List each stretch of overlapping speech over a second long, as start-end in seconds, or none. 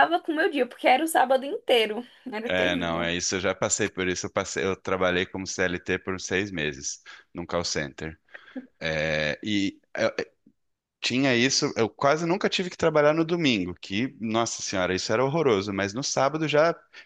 none